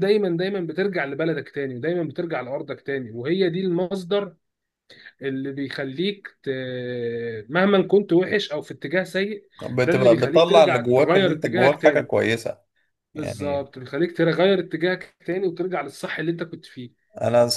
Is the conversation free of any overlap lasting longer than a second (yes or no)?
no